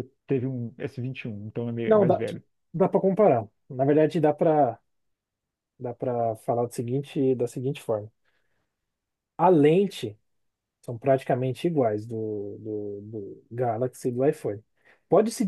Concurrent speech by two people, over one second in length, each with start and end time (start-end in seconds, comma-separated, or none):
none